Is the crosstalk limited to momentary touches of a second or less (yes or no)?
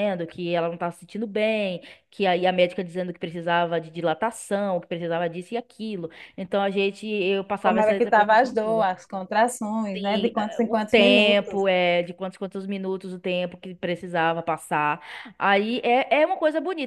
no